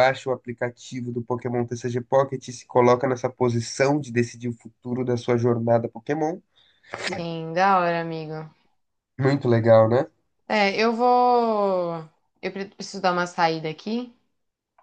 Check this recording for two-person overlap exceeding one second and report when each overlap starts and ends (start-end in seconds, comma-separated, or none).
none